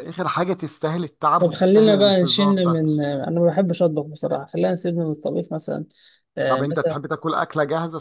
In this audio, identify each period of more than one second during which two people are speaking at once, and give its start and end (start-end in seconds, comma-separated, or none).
1.4-2.8